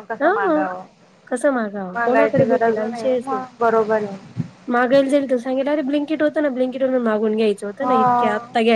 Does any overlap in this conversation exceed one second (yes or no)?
yes